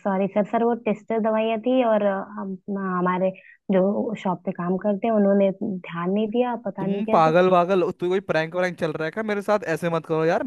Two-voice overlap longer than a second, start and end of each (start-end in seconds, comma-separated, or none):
none